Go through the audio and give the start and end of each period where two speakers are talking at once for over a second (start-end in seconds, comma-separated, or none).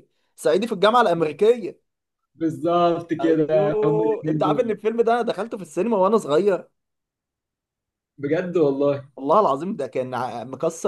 3.2-4.8